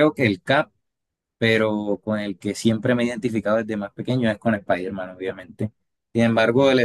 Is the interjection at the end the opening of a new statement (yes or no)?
no